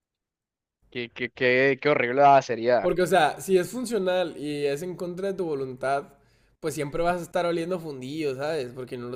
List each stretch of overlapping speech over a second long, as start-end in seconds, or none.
none